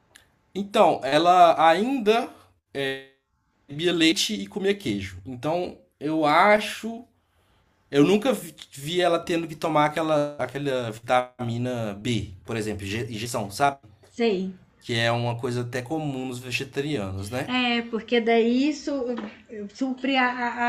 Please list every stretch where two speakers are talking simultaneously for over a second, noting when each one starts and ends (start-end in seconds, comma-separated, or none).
none